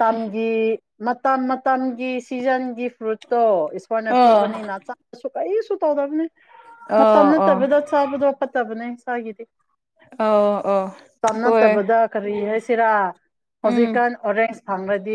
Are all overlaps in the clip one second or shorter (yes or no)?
yes